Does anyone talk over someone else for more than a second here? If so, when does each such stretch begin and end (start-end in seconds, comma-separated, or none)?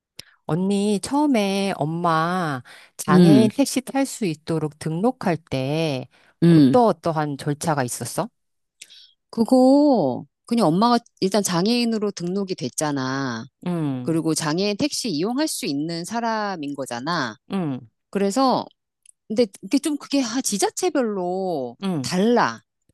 none